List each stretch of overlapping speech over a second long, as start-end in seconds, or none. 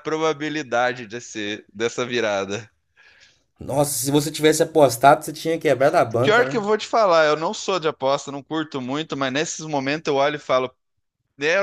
none